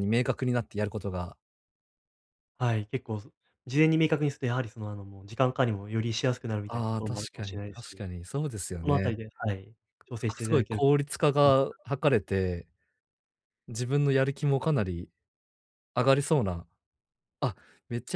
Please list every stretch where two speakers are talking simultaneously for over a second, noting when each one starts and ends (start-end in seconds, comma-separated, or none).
6.7-8.0